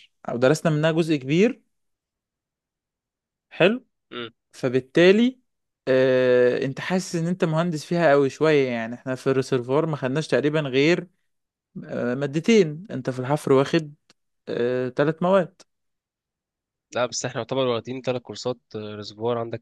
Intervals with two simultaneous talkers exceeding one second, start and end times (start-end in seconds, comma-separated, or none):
none